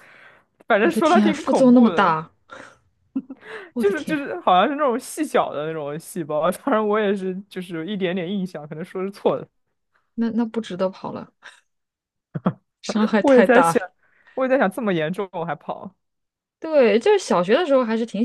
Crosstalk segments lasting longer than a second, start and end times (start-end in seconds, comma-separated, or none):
0.8-2.1